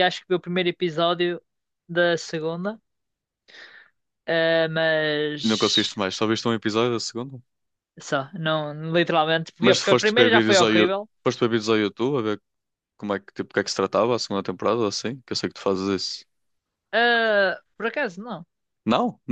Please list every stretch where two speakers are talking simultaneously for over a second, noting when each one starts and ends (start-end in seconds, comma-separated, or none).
9.6-11.1